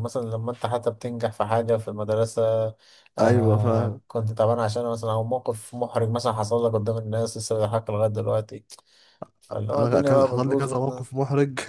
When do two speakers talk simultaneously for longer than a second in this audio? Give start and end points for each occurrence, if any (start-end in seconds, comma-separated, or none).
9.7-11.1